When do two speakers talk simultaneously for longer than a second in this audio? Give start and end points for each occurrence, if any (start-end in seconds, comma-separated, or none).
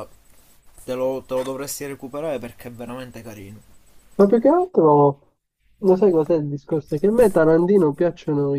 none